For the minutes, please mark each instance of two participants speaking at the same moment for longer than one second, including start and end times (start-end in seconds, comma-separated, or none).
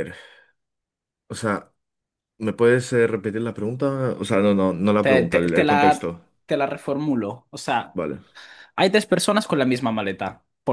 5.0-6.2